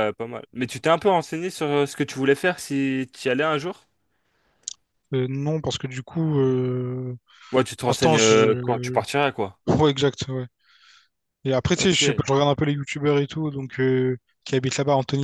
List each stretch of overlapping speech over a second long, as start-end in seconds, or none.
7.8-9.0